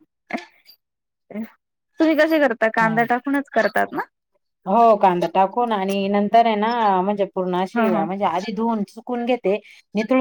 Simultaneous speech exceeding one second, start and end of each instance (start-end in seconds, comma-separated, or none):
none